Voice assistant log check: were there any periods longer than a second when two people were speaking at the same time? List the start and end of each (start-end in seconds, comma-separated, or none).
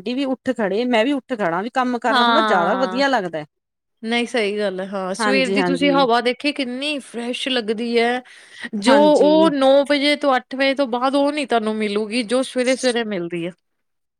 none